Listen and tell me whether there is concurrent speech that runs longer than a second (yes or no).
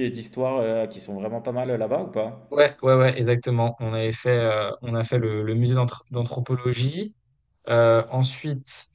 no